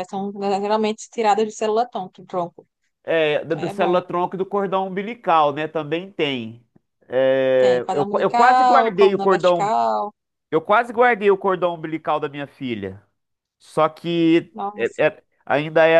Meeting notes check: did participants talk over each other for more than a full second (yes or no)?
yes